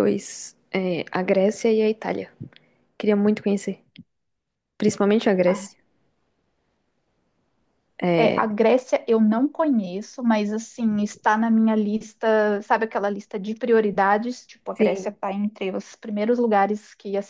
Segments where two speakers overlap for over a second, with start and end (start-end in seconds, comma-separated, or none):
none